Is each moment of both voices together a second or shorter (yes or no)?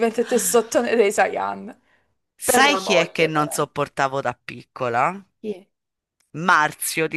no